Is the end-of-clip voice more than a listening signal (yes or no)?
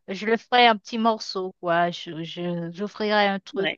no